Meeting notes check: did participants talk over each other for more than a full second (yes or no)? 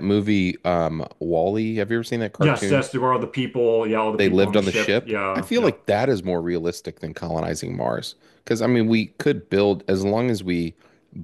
yes